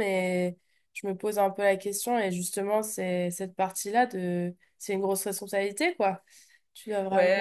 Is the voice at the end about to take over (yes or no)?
yes